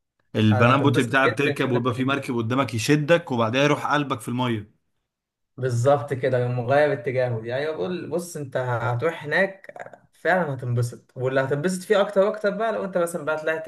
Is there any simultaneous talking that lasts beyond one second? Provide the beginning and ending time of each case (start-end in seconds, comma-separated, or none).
0.5-2.3